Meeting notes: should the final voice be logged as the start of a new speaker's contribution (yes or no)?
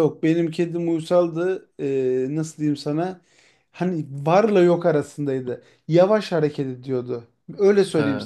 no